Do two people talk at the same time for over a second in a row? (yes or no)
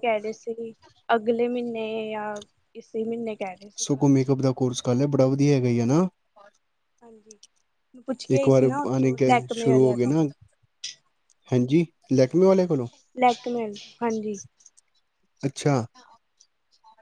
yes